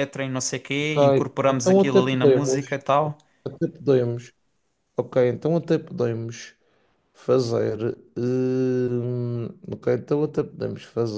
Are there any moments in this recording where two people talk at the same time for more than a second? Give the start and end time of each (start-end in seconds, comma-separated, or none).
0.8-2.7